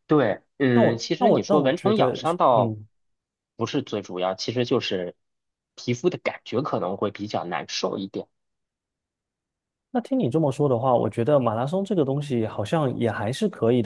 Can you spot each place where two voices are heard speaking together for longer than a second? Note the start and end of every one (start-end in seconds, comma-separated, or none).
0.7-2.7